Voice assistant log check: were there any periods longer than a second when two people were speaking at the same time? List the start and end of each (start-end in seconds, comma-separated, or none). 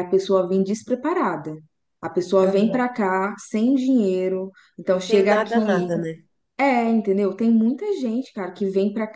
none